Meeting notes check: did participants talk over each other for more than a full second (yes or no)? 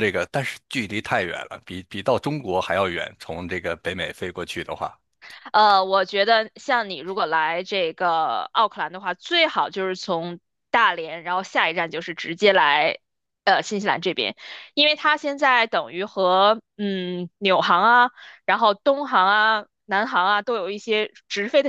no